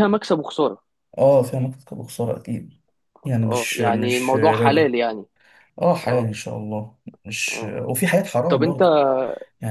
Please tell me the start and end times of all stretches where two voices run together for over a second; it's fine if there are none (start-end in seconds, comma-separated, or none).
3.5-4.9